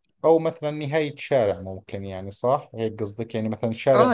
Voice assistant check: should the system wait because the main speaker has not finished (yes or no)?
no